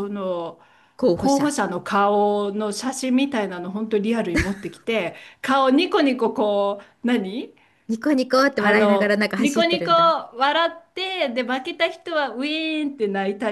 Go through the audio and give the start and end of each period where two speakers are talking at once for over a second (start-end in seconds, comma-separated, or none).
8.6-9.9